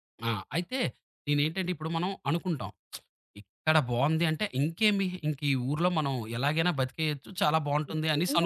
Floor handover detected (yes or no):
yes